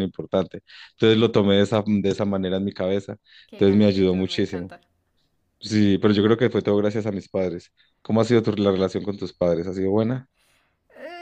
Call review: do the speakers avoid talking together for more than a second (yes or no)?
no